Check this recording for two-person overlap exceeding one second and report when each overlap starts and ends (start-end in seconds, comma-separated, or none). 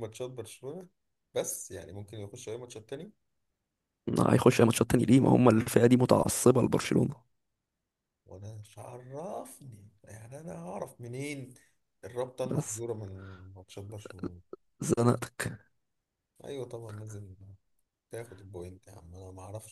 none